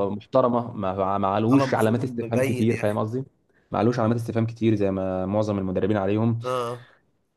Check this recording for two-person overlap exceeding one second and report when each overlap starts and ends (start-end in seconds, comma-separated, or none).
1.5-3.0